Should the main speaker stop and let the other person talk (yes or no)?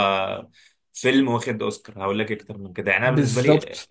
no